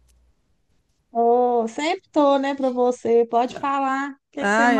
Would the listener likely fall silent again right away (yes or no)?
no